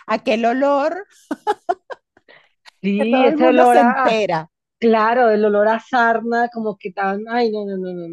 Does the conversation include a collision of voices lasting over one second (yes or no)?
yes